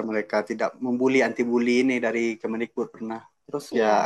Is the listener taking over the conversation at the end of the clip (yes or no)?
no